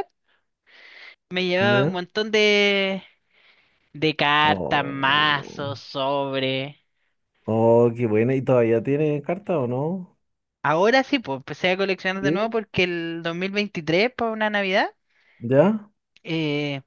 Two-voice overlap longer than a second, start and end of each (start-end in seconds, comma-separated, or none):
4.4-5.8